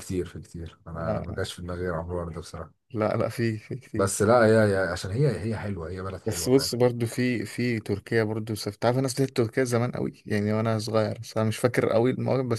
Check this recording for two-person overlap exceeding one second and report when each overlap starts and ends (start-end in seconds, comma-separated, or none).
none